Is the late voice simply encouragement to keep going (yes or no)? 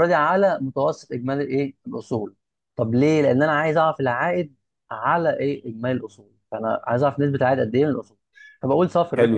no